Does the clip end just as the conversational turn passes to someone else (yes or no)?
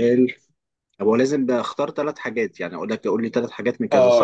yes